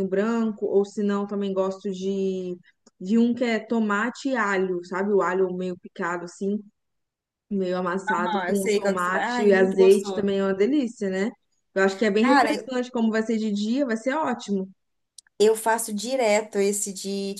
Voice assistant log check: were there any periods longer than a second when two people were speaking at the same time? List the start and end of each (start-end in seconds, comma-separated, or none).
8.1-10.3